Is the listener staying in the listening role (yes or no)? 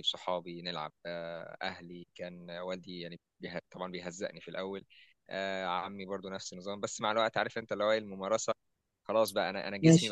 yes